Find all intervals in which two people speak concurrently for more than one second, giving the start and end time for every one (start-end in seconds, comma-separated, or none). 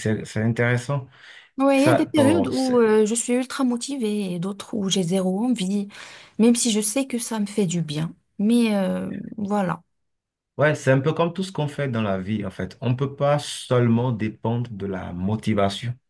1.7-3.0